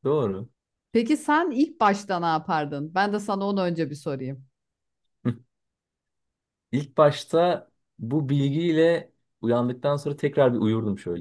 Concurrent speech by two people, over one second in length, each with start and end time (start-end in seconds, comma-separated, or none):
none